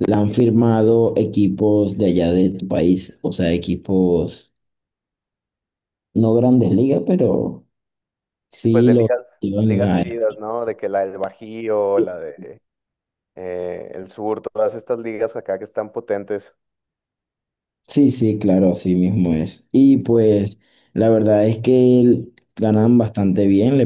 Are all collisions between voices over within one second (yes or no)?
no